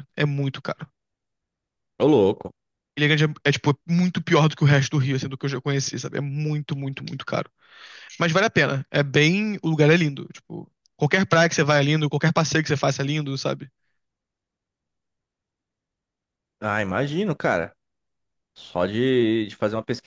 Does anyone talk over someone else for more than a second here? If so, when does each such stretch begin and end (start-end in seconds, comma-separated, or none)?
none